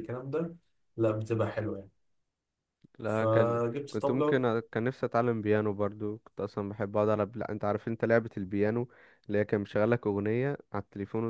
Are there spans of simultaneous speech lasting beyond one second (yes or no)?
yes